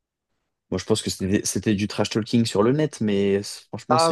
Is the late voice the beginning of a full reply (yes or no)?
yes